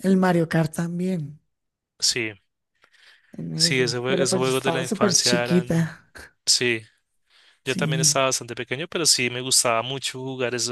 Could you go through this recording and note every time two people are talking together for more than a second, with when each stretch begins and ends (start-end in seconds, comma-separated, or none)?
3.5-5.9